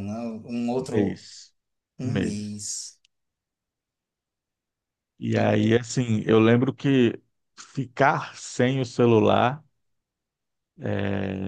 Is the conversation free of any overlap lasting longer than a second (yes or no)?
yes